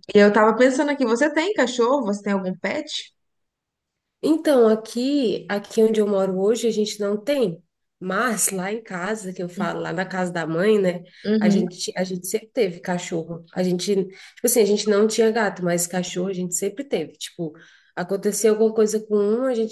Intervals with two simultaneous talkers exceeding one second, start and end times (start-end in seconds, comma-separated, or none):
none